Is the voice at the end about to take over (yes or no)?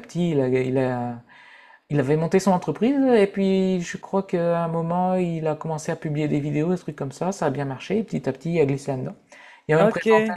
no